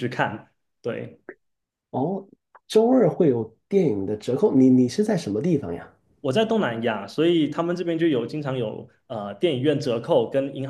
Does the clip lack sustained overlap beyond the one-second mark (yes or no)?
yes